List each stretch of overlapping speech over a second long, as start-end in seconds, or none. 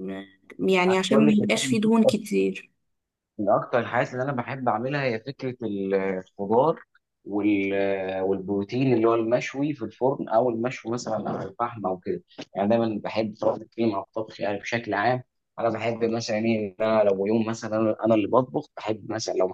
none